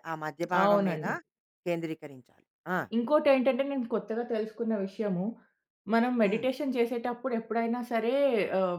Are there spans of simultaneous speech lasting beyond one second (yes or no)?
no